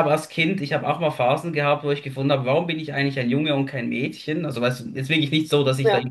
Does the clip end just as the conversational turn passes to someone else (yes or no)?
no